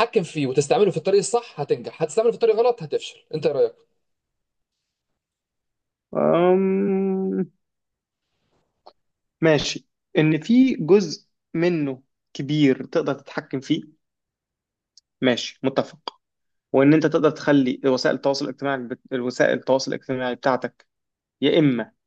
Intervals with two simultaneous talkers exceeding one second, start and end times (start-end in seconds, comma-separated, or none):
none